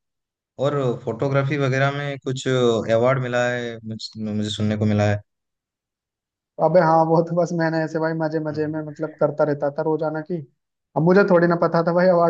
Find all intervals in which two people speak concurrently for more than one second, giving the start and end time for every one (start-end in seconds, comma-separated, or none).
none